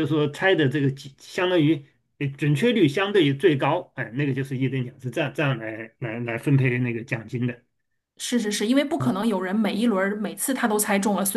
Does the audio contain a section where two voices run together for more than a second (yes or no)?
no